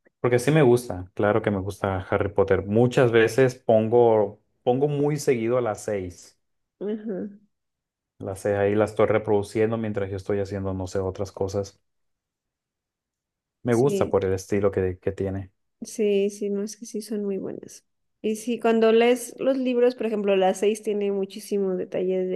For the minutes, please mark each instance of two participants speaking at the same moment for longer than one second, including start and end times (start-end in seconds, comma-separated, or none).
none